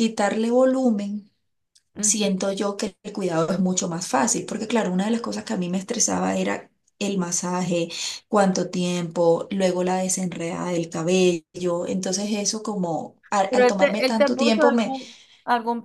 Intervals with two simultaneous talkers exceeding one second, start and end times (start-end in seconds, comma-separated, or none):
13.5-14.9